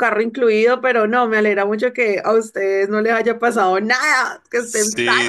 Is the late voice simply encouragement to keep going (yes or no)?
no